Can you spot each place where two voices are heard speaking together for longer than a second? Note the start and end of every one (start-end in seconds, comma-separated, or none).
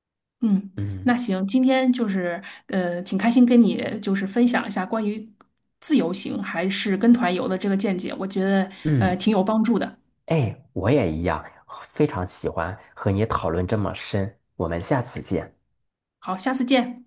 none